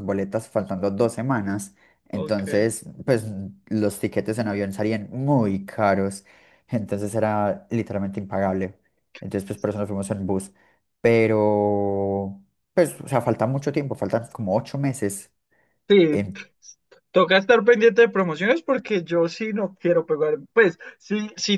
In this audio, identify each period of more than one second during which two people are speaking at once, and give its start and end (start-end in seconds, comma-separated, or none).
none